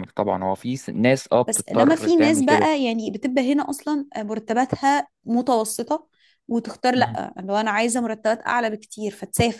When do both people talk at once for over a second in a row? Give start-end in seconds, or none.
1.5-2.7